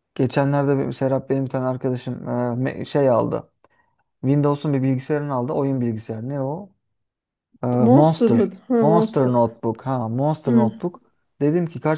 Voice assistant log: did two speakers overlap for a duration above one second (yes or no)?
yes